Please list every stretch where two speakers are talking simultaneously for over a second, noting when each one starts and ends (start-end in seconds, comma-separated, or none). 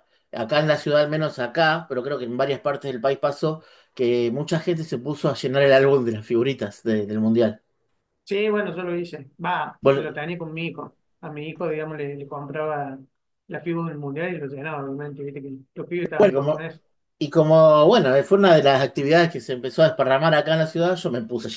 none